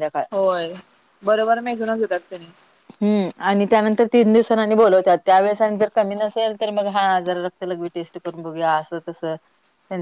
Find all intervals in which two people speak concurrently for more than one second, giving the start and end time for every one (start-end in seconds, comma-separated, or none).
none